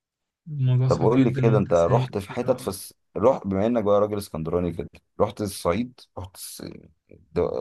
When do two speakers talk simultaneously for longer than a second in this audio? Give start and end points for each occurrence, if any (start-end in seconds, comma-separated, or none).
0.9-2.7